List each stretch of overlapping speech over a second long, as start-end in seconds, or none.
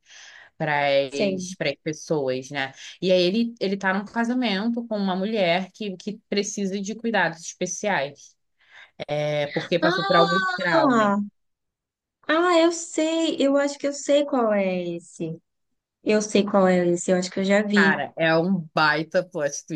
9.8-11.1